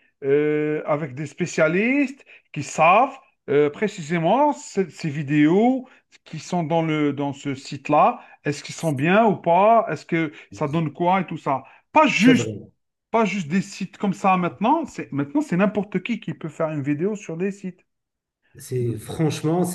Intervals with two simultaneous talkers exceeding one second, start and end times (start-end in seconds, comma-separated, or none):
none